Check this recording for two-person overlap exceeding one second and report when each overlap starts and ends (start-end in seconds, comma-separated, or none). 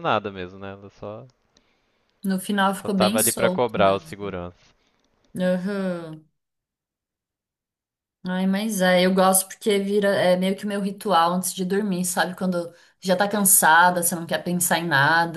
2.7-4.3